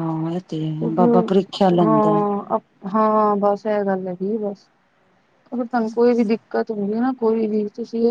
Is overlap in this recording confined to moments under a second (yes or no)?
no